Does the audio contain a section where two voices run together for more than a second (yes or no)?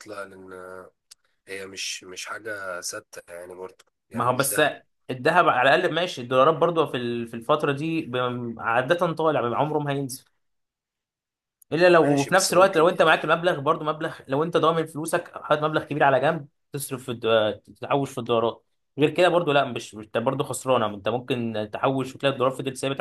yes